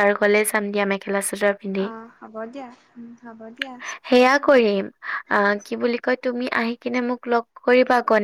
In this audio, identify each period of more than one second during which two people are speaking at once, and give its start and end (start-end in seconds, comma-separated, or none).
none